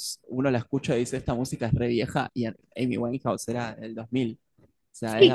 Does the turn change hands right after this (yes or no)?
yes